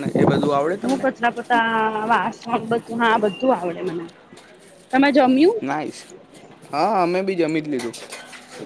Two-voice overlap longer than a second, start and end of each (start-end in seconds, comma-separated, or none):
none